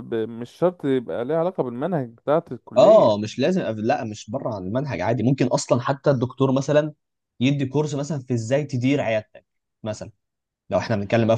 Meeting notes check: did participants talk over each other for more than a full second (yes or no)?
no